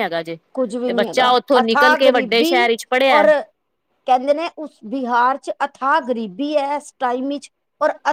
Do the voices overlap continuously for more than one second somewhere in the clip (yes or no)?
yes